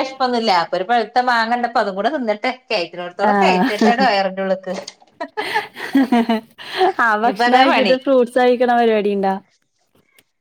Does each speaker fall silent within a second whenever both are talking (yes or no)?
yes